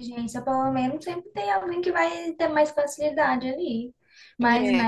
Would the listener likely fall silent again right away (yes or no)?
yes